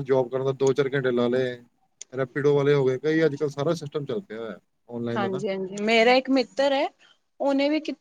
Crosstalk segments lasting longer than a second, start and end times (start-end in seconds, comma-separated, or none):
none